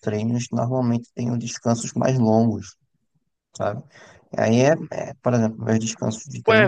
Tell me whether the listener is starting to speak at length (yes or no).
yes